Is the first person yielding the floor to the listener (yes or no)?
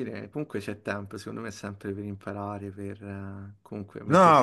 yes